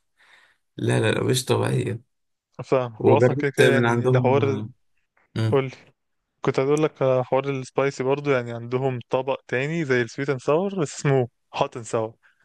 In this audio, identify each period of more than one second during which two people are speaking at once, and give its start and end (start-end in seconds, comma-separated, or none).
3.0-4.6